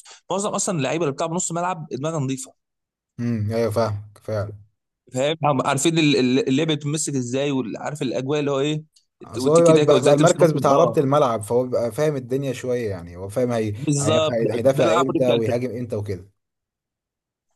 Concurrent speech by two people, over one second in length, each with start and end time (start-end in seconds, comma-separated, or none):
9.4-10.9, 13.8-15.6